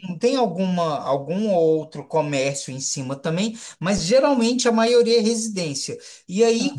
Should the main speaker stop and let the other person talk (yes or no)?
no